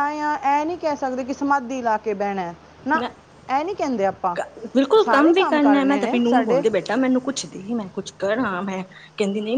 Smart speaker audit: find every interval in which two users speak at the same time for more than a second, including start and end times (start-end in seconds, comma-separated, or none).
5.0-6.6